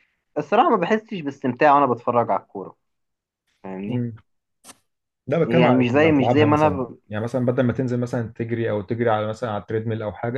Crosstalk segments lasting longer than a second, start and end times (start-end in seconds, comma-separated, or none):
5.4-7.0